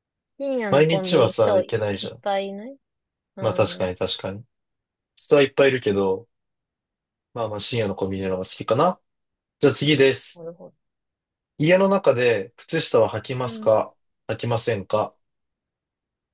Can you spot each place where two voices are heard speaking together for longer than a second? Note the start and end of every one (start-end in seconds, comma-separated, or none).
0.7-2.2